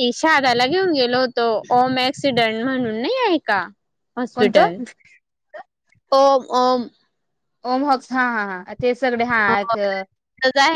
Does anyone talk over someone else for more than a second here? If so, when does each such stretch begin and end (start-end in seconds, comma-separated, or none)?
none